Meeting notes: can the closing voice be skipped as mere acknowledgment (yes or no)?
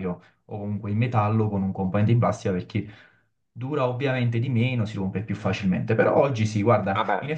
yes